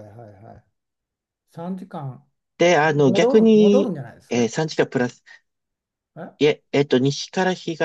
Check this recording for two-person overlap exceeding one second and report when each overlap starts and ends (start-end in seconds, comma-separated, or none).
2.8-4.3